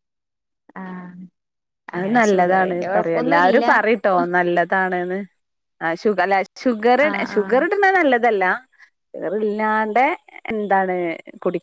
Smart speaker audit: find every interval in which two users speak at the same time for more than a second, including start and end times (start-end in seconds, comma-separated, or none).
2.0-3.7